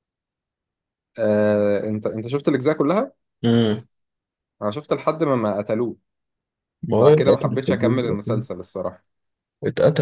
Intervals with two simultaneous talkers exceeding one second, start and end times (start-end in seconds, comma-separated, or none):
7.0-8.4